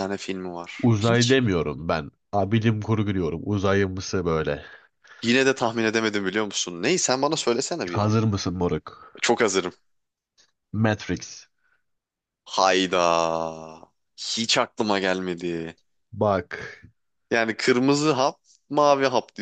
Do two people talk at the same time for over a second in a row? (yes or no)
no